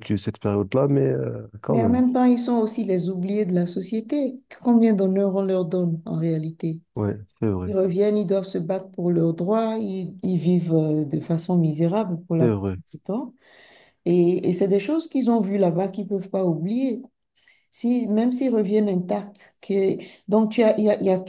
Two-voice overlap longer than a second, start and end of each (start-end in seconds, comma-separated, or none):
none